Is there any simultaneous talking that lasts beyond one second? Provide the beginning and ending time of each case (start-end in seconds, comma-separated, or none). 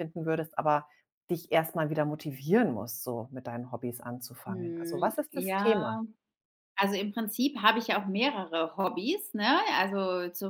4.5-6.0